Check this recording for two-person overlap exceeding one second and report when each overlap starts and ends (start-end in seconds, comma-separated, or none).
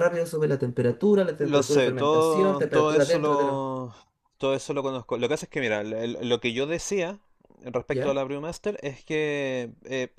1.4-3.6